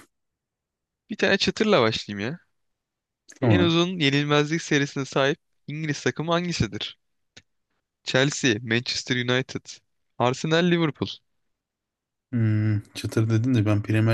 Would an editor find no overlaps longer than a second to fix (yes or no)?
yes